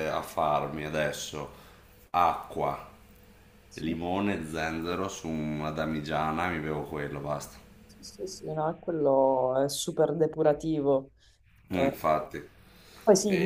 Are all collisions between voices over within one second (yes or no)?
yes